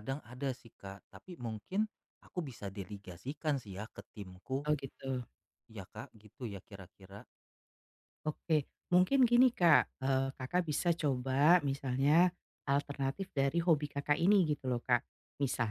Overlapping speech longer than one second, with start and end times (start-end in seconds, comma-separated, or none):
none